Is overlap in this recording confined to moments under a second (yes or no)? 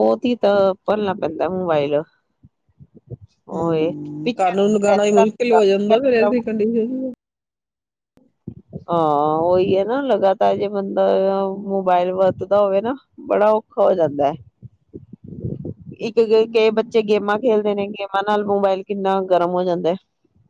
no